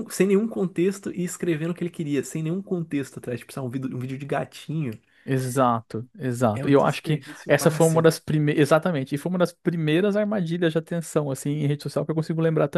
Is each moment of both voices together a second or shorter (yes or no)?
no